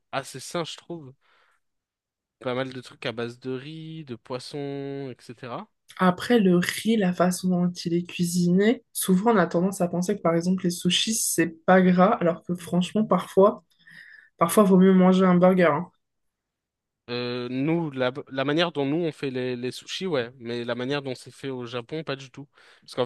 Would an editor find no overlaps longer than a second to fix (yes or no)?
yes